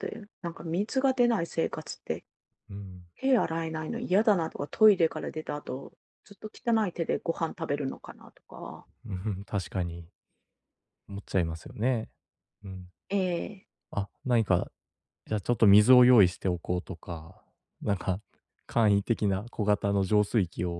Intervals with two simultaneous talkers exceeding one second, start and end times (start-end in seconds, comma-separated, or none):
none